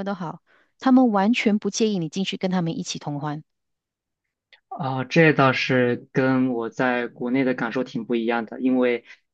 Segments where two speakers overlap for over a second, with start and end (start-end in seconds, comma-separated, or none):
none